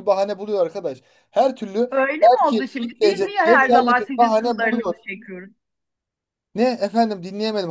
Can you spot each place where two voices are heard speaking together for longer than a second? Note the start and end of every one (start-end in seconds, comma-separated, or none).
2.3-5.0